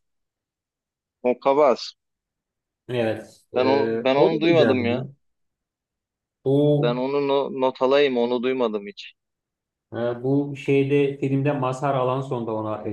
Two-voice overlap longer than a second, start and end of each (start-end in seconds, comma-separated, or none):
3.5-5.0